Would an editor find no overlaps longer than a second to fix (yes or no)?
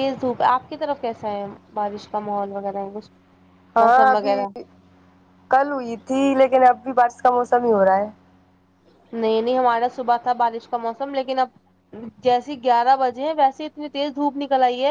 yes